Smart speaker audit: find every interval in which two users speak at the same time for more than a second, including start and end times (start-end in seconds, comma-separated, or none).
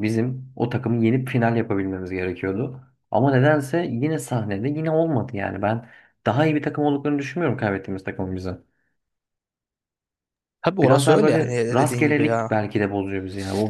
10.8-12.5